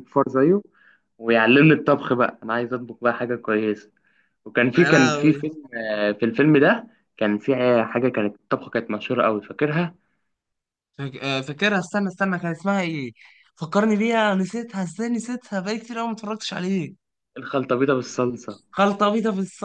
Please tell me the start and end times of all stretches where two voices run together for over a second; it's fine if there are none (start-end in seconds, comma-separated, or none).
none